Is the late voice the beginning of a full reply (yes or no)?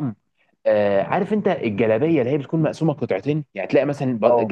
no